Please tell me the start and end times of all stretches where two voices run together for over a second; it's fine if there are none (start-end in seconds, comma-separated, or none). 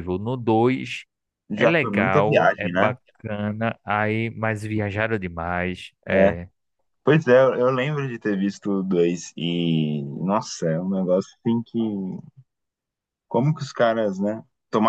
1.6-3.0